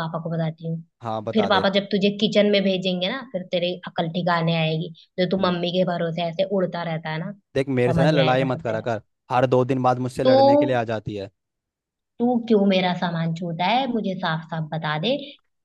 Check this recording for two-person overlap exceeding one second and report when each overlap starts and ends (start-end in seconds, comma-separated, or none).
7.5-8.9